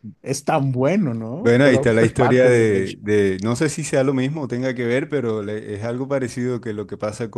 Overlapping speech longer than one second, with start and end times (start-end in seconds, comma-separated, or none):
1.4-3.0